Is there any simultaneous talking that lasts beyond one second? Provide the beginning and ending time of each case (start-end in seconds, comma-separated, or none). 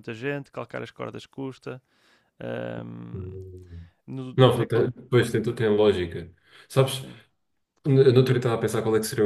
none